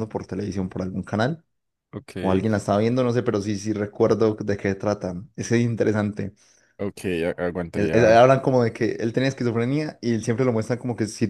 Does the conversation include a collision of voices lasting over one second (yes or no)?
no